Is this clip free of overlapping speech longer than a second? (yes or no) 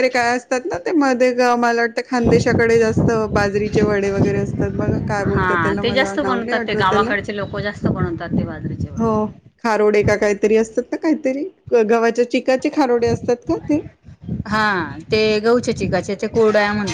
no